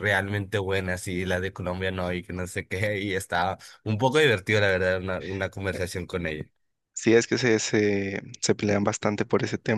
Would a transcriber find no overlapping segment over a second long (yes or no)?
yes